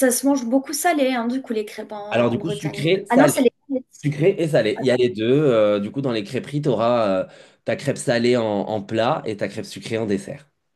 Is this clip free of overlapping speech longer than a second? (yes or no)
no